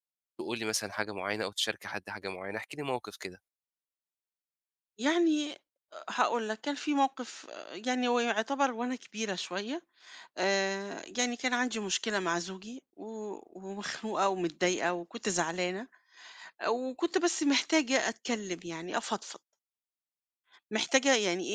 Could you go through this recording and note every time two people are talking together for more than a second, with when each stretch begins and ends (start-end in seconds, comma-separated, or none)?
none